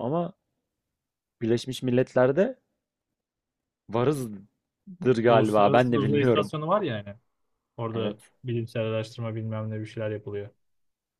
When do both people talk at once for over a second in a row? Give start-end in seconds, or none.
5.3-6.5